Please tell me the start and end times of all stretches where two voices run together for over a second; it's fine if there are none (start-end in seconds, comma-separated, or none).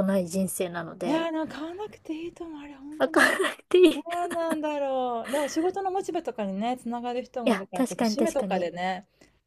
7.4-8.7